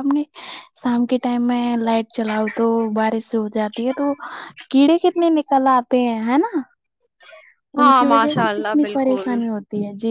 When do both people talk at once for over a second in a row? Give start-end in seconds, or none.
7.8-9.4